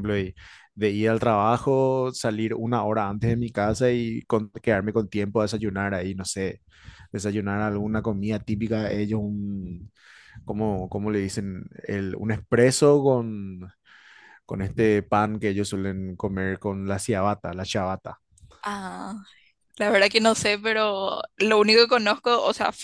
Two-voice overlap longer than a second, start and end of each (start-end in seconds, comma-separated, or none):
none